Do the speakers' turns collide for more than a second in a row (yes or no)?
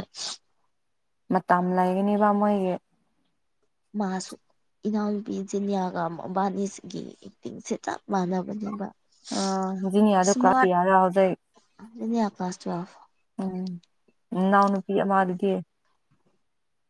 no